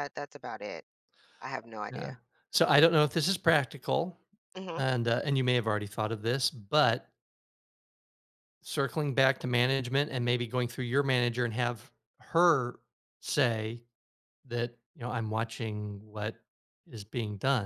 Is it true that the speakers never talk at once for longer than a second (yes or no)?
yes